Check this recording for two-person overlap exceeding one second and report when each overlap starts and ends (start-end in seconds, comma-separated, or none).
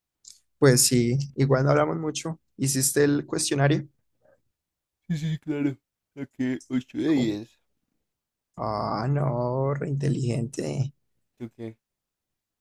none